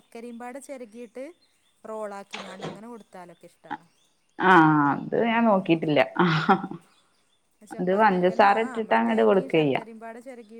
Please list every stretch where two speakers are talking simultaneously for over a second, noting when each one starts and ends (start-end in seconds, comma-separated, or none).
7.8-9.8